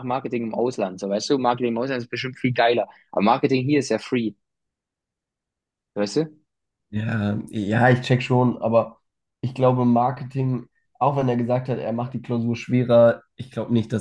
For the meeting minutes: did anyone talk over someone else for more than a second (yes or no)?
no